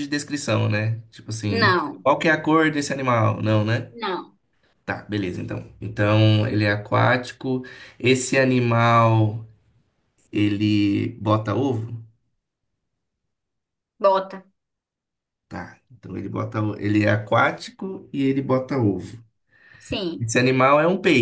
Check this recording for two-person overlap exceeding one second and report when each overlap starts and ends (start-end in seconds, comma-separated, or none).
none